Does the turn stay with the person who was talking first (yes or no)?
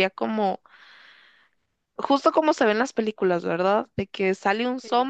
yes